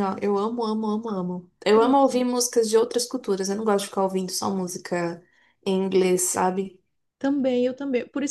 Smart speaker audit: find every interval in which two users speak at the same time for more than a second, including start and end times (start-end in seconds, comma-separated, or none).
none